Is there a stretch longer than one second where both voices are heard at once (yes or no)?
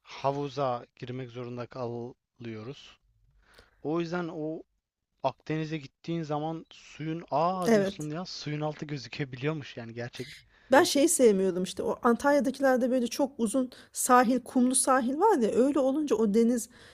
no